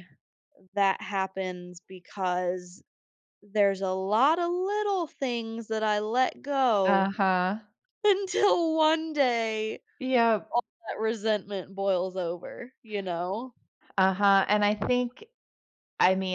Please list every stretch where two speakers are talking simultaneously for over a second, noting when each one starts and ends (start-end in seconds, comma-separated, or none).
none